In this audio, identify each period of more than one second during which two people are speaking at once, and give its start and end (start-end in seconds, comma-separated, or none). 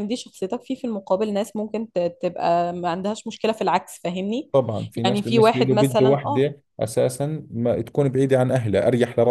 5.0-6.5